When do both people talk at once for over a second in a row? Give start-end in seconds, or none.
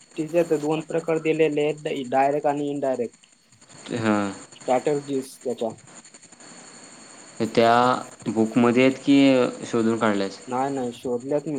none